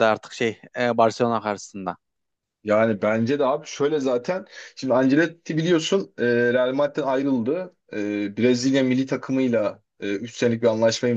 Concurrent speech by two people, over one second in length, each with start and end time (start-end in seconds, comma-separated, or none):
none